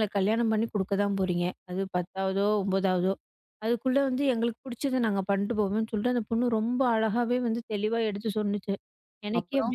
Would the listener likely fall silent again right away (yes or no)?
yes